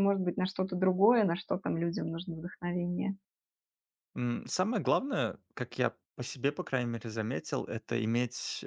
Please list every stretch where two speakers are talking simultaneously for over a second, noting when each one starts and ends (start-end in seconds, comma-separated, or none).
none